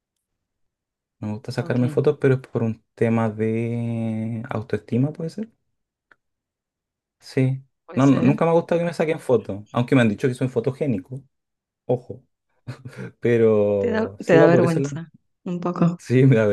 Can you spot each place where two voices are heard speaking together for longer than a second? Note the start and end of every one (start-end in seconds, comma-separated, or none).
13.8-15.0